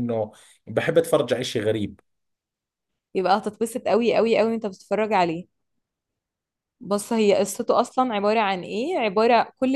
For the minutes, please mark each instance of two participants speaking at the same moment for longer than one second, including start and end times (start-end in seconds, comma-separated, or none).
none